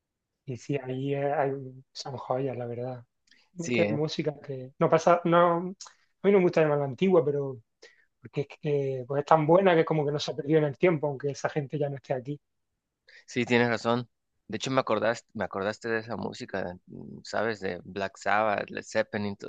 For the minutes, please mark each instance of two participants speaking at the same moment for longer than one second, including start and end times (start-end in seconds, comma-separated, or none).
none